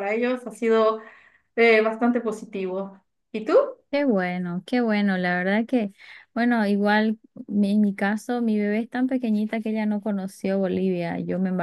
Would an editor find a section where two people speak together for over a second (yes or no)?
no